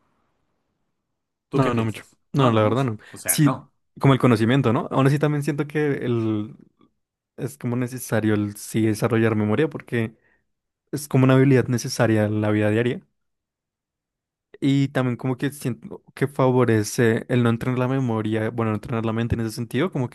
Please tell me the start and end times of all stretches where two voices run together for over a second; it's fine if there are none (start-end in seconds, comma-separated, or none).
1.5-3.7